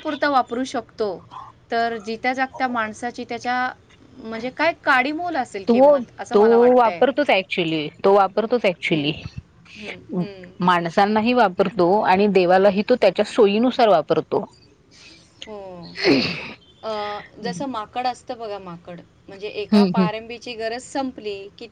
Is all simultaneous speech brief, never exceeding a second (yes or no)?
yes